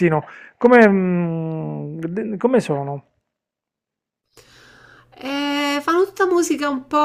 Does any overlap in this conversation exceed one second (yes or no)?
no